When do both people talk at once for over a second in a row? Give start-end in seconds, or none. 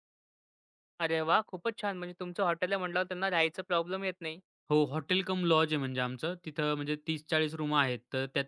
none